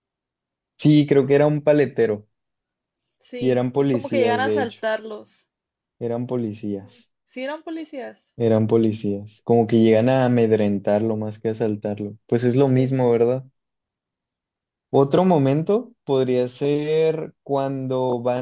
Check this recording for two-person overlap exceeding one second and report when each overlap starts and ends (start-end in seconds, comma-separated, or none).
3.4-4.8